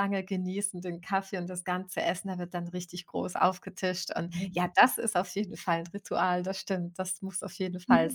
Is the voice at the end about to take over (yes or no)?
yes